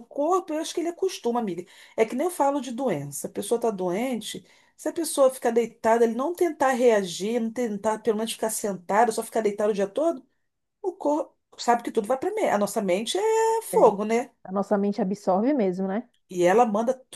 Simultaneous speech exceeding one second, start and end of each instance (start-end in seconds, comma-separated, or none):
none